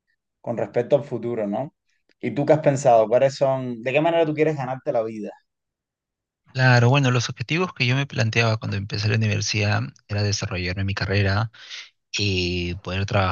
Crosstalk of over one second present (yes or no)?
no